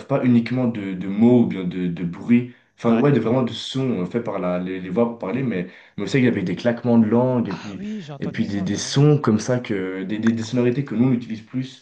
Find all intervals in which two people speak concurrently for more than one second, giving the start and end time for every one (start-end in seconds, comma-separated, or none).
7.4-9.0